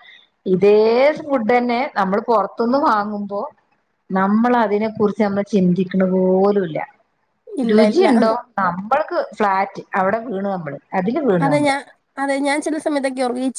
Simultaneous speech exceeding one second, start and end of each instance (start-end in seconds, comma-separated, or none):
none